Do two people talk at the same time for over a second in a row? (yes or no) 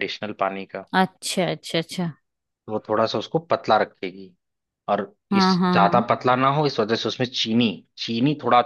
no